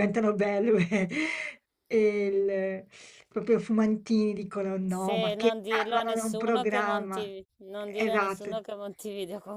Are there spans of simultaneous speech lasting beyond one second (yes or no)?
yes